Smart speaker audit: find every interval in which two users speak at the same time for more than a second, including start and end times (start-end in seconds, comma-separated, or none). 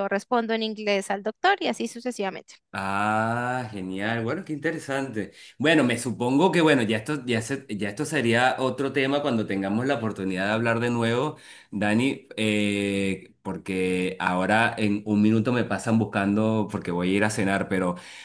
none